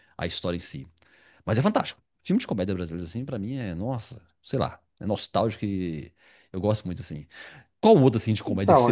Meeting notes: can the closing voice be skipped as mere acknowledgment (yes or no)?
yes